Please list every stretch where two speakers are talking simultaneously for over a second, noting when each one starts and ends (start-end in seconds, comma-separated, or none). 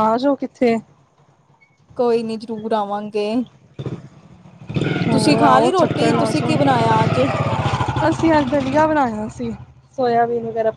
5.1-6.8